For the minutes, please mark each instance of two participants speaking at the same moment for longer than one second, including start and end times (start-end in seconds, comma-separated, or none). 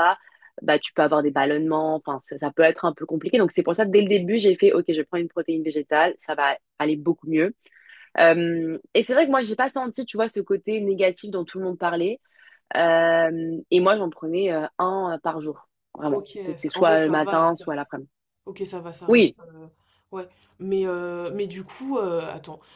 16.1-17.6